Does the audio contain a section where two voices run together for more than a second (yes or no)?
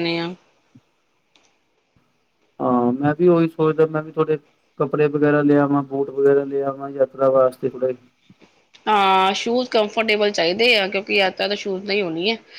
no